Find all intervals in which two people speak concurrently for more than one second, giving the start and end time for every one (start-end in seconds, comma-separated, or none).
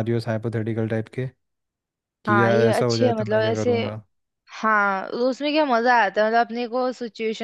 2.3-3.7